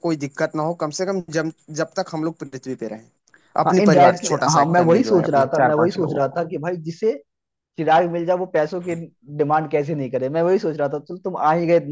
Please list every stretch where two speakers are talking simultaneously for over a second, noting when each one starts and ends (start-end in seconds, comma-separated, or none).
3.7-6.4